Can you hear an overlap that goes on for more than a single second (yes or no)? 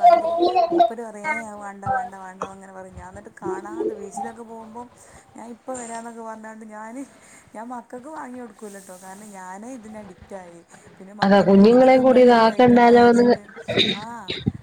yes